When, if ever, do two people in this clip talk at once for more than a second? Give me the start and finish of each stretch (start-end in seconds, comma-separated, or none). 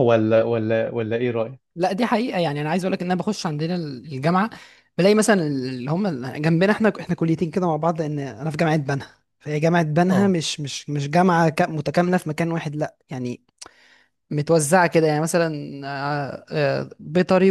none